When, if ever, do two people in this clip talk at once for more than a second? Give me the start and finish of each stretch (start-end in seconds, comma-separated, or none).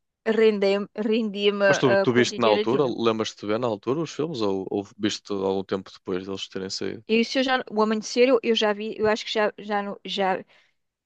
1.7-3.0